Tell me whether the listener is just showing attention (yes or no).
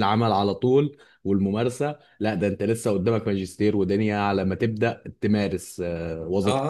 no